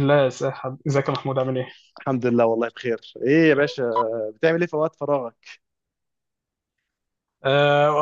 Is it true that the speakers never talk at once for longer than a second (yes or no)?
yes